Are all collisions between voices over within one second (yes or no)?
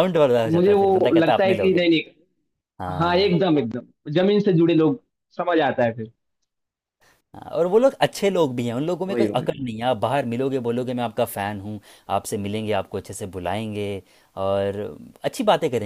no